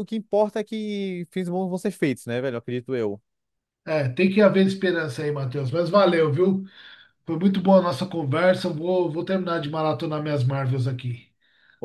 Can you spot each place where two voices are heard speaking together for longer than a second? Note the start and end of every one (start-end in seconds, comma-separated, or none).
none